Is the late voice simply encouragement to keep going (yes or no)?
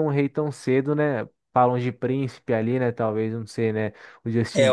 no